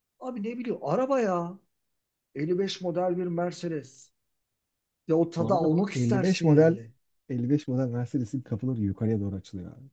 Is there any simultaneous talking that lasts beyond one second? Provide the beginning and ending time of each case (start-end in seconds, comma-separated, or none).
5.4-6.8